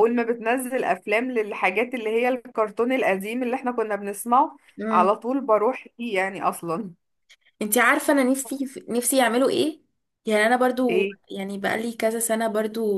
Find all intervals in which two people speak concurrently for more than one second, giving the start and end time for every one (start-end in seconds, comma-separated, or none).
none